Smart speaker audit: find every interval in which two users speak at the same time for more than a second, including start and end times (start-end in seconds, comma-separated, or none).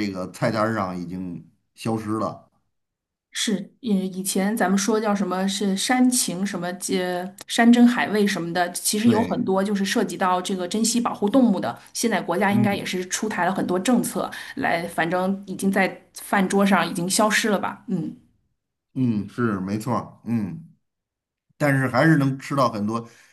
none